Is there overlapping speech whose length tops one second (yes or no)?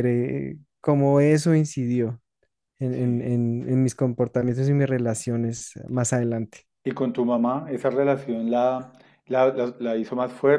no